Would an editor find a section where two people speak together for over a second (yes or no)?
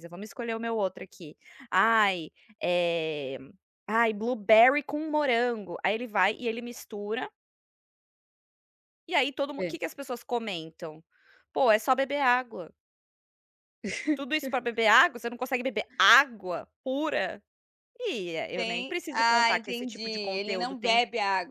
yes